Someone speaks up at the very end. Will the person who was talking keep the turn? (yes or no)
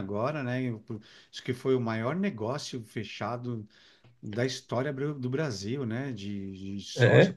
no